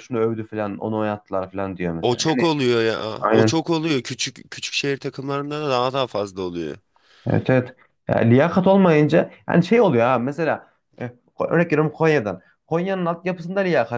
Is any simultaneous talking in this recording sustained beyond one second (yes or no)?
no